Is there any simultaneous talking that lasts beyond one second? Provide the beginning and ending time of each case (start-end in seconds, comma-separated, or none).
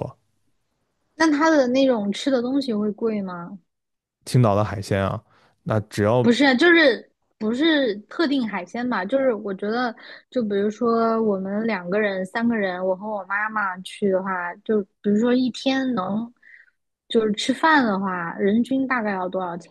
none